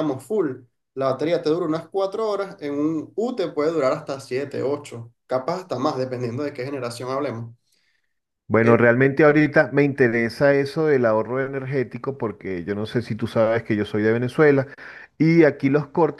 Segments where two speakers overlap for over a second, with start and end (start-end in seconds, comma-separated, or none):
none